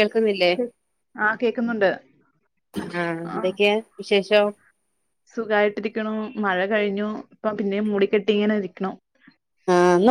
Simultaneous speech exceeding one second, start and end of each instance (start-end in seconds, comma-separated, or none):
none